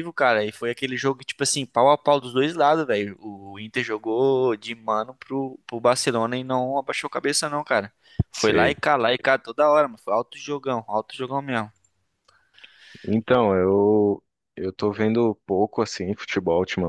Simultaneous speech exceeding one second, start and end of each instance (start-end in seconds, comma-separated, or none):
none